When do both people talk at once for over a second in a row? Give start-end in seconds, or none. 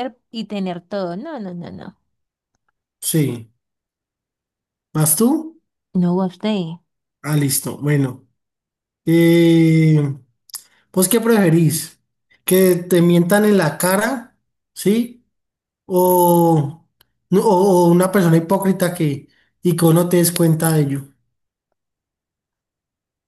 none